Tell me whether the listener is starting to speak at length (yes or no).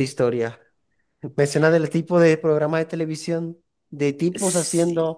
no